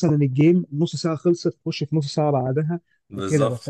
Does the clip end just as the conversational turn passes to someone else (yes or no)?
no